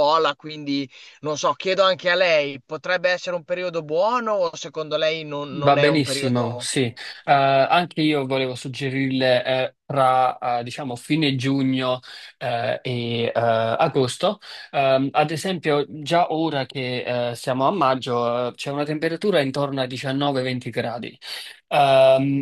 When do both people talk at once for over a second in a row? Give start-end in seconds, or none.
5.5-6.7